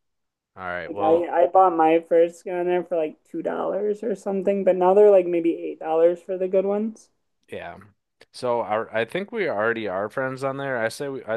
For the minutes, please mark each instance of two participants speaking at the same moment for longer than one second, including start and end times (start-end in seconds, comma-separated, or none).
none